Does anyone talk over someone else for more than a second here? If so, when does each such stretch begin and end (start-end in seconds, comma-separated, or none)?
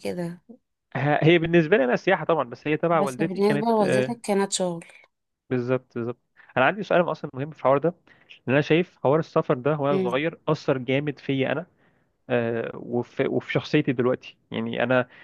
2.9-4.2